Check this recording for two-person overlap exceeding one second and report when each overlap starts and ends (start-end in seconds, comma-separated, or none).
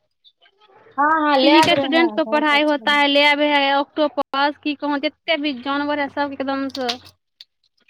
1.4-2.9